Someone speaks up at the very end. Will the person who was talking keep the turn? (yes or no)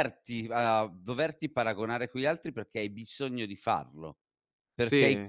yes